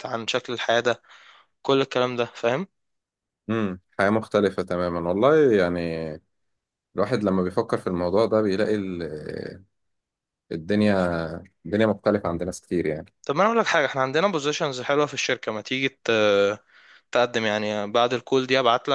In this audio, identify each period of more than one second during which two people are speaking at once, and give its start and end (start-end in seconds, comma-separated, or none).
none